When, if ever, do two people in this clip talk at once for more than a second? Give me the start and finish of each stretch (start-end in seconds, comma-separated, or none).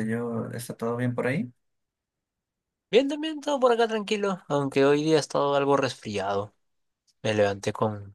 none